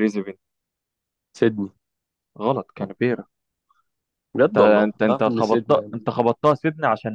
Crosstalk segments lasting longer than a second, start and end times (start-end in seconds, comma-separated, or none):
4.5-6.0